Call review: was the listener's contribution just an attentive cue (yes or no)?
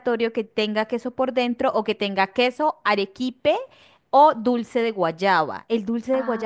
no